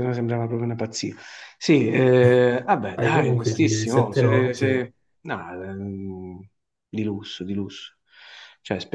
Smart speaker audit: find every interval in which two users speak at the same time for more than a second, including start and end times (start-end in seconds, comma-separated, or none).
3.0-4.7